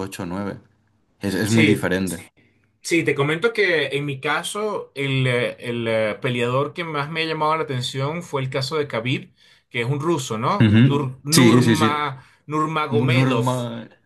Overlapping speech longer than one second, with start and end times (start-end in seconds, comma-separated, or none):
10.6-12.1